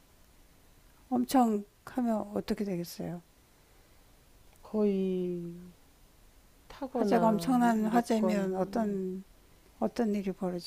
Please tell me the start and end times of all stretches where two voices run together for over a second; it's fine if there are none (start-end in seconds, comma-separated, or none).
6.9-9.0